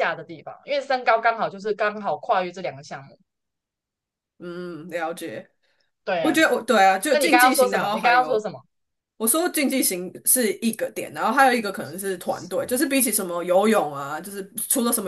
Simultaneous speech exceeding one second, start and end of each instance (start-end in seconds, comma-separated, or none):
7.1-8.5